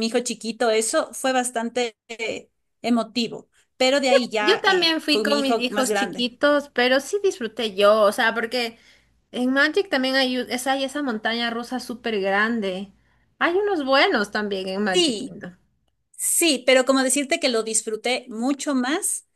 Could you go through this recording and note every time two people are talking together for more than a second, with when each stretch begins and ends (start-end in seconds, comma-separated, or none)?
4.4-6.3